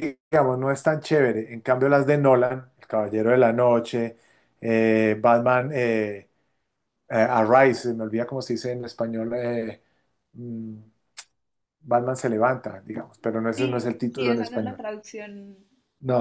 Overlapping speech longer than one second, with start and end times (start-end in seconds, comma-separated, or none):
13.6-14.8